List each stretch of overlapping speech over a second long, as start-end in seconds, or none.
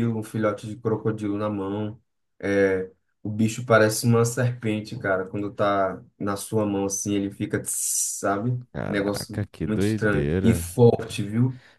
8.7-10.8